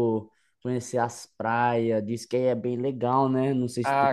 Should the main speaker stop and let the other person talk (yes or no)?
yes